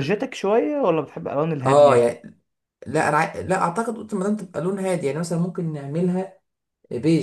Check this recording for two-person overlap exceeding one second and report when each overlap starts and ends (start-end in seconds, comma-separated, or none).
none